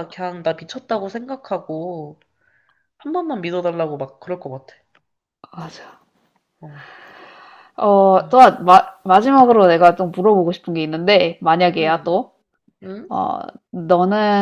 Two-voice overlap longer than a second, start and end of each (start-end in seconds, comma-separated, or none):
none